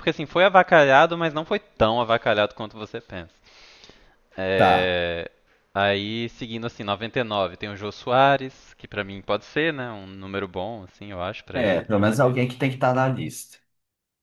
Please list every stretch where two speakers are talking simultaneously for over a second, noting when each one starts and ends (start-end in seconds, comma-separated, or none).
none